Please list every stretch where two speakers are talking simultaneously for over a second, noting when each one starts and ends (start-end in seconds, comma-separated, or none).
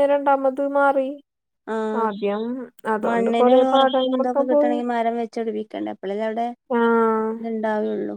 3.1-4.8